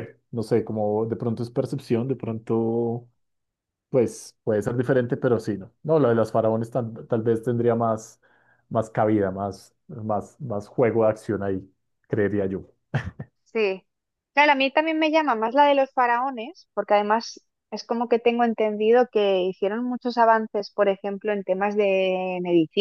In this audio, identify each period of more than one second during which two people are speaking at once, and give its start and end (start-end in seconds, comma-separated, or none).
none